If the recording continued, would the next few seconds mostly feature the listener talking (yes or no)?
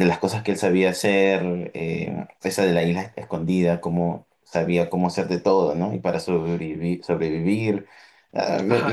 yes